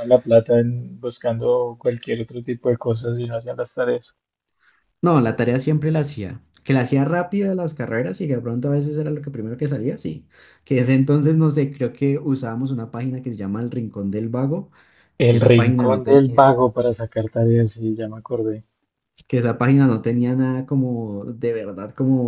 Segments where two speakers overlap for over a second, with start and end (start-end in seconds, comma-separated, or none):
15.3-16.6